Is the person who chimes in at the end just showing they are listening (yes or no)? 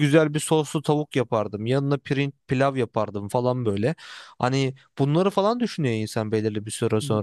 yes